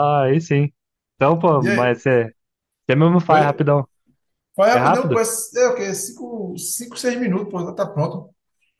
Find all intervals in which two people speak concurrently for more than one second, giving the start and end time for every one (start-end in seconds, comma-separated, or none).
none